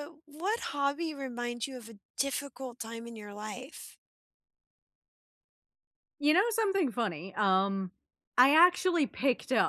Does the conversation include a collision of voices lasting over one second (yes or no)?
no